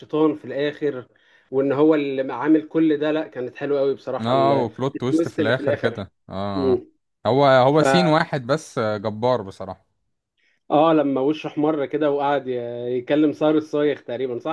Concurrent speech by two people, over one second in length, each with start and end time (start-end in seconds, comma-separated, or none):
4.2-6.0